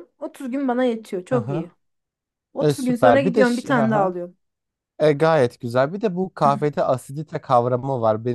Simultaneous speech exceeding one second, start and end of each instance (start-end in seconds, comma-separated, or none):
2.6-4.1